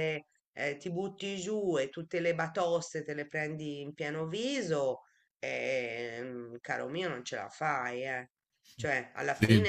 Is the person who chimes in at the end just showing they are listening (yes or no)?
yes